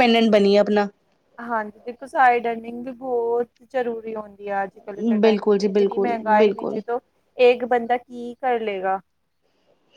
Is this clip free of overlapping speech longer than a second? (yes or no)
no